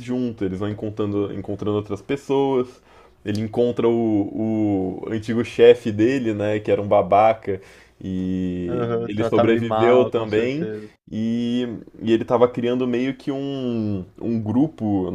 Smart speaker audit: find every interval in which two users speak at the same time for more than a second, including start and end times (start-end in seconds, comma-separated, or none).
8.7-10.7